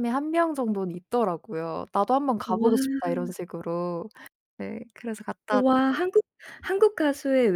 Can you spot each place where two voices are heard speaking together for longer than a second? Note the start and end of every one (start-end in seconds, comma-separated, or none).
none